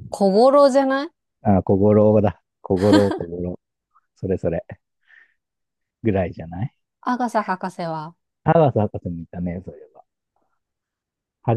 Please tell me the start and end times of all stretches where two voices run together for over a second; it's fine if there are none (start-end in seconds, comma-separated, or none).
none